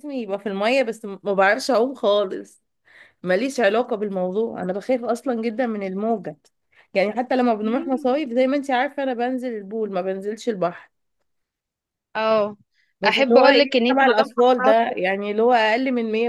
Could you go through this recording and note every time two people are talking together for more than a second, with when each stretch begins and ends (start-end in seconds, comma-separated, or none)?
13.1-14.9